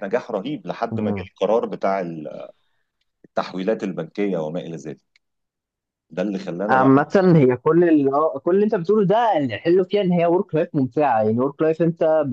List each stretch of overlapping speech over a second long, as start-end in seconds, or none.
none